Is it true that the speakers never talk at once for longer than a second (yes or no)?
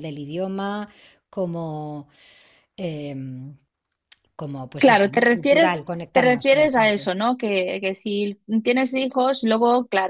no